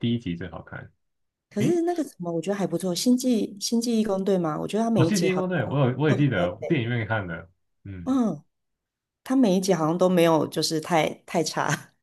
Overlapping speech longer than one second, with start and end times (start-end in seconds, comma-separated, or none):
5.0-6.8